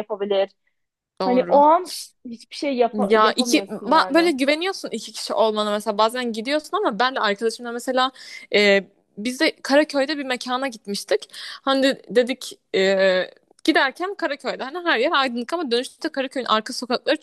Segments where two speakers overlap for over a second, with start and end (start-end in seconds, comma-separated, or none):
2.9-4.3